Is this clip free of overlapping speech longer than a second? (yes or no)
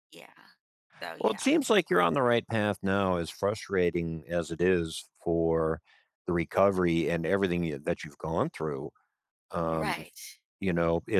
yes